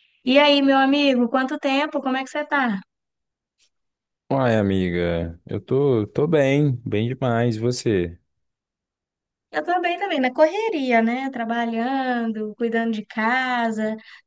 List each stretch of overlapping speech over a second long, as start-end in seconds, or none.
none